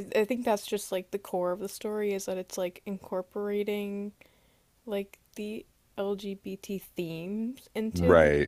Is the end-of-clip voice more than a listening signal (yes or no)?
no